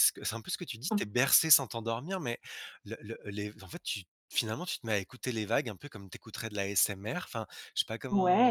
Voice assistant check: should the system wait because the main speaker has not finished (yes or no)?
no